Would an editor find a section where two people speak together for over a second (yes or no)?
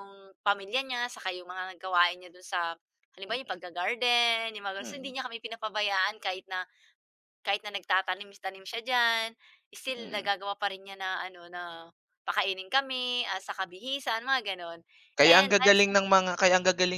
no